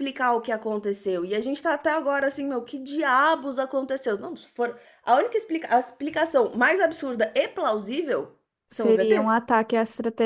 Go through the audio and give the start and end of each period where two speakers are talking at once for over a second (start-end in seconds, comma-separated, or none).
none